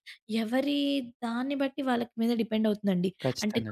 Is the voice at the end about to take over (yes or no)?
no